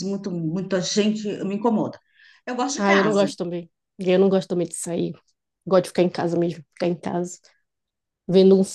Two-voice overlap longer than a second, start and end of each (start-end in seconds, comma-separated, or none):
none